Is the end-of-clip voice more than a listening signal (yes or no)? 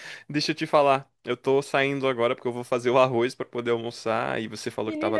yes